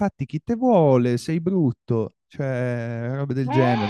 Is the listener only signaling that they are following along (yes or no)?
yes